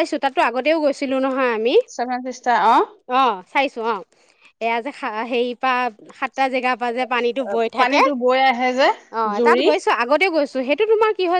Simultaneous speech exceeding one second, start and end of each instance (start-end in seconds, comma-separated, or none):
none